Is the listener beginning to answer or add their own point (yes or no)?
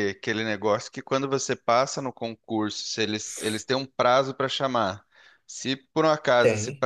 no